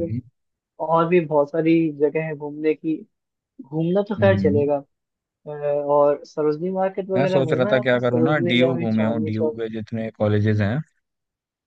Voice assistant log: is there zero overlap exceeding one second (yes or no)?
no